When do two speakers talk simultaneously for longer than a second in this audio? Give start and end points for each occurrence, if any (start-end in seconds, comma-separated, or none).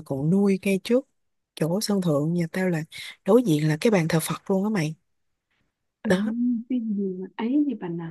none